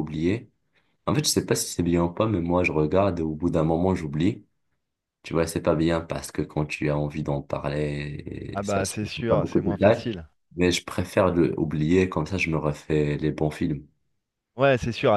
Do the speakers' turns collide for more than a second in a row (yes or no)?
yes